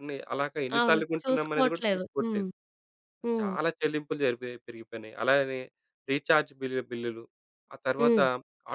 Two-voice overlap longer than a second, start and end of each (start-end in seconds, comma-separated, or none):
0.8-2.5